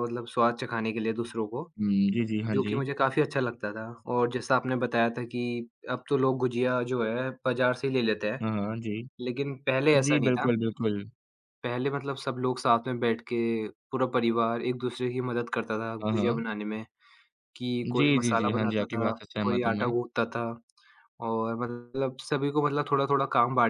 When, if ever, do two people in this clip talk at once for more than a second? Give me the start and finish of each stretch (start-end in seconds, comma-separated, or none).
18.0-19.9